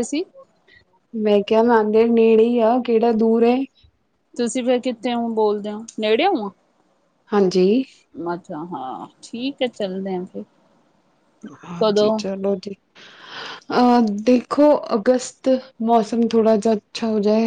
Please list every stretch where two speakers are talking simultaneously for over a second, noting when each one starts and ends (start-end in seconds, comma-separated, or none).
none